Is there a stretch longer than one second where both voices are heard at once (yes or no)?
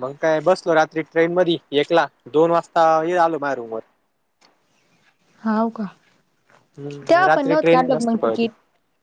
yes